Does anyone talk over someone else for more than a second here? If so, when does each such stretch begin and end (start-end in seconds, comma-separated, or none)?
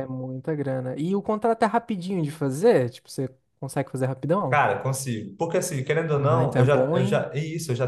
6.1-7.3